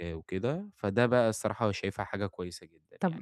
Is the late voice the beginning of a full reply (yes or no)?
yes